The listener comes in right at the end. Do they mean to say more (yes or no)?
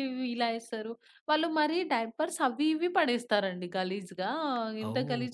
no